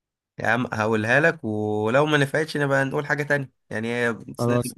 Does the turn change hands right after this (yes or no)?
no